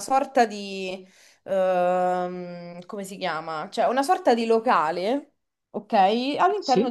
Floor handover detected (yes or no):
no